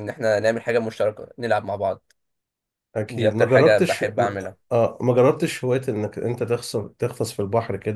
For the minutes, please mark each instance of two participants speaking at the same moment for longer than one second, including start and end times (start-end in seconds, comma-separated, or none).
3.1-4.6